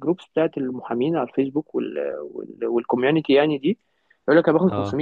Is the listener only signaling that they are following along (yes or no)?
yes